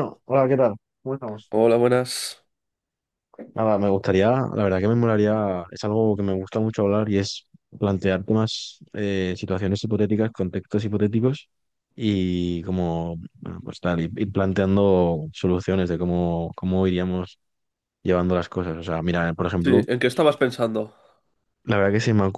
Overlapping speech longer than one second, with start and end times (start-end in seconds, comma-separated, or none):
none